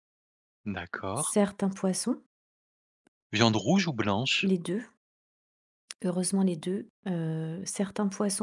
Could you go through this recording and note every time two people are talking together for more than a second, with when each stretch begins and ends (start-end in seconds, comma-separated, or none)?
none